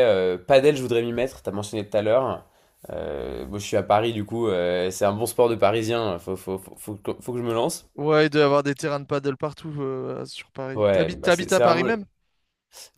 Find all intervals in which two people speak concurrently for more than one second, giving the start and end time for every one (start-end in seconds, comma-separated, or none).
10.7-12.0